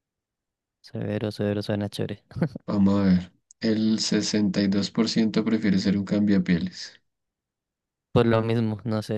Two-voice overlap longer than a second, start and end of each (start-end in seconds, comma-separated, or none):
none